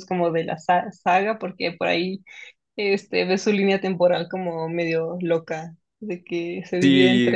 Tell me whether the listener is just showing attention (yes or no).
no